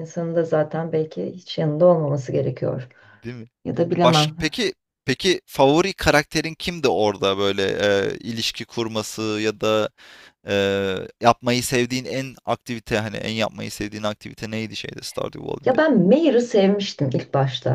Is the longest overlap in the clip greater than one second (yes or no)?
no